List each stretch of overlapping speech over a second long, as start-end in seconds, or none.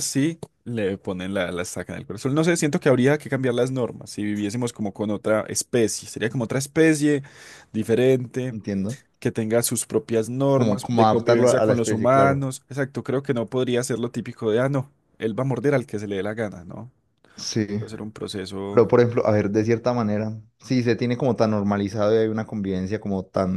10.5-12.5